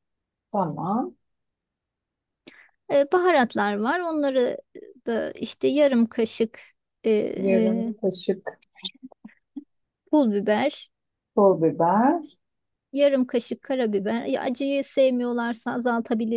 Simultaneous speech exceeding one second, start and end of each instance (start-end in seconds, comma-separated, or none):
none